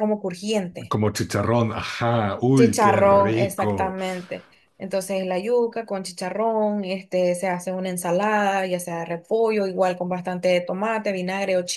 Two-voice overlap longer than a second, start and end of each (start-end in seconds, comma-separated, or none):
2.5-4.0